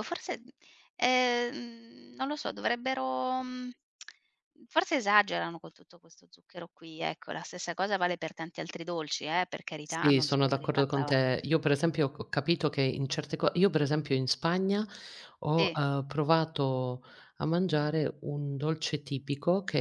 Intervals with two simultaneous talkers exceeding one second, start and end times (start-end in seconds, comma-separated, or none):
9.8-11.2